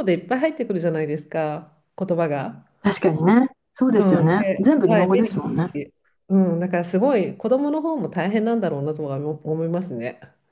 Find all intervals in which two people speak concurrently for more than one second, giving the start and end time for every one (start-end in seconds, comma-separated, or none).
4.0-5.8